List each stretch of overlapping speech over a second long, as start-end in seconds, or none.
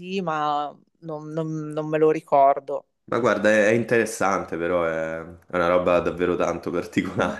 none